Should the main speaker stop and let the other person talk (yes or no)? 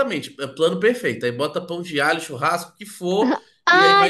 yes